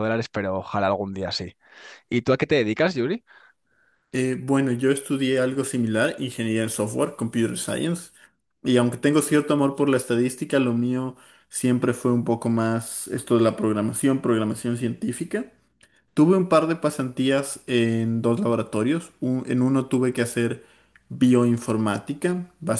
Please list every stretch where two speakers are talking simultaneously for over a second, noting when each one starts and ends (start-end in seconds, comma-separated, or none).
none